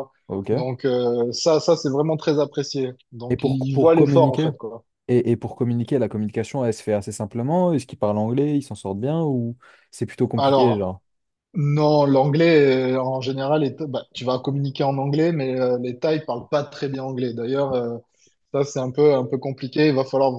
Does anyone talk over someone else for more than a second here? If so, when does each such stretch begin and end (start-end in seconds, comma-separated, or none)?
3.3-4.5